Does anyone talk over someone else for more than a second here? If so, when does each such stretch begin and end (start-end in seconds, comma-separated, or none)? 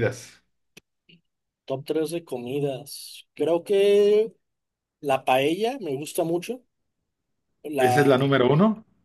none